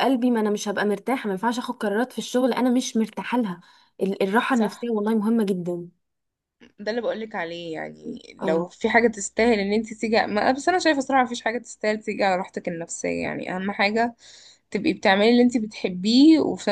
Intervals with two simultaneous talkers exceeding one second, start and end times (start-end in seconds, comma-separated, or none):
none